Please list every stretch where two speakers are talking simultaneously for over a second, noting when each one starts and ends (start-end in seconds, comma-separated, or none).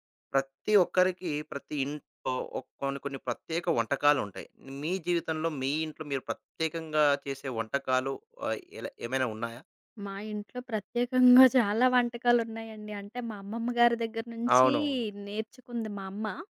none